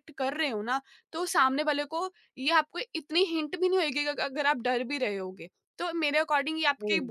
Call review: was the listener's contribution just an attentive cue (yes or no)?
yes